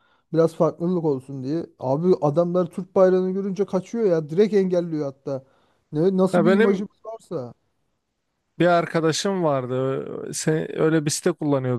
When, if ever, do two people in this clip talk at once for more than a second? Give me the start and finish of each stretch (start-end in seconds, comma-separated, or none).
none